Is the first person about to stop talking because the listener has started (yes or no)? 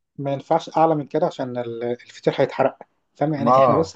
no